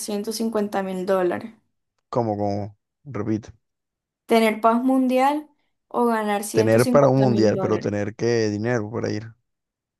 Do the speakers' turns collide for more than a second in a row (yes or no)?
yes